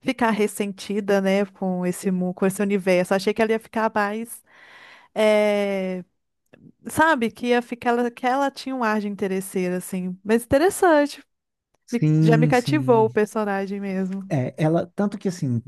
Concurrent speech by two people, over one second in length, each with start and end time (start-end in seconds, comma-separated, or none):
11.9-13.2